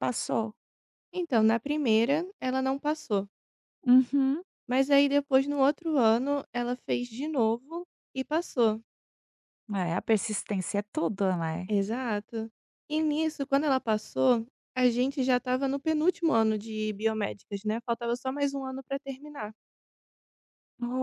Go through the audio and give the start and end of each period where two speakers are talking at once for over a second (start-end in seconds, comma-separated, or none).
none